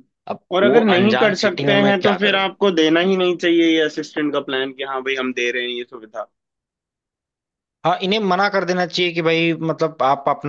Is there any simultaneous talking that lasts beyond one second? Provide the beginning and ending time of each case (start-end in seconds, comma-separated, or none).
0.6-2.5